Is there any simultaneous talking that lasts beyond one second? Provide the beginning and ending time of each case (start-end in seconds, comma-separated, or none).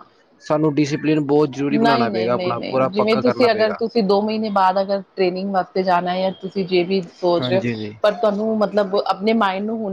1.7-3.8